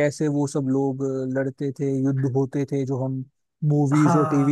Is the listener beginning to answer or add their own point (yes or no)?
yes